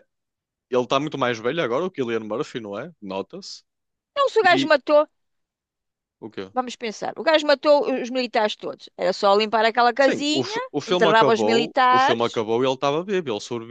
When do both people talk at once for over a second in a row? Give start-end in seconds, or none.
10.0-12.3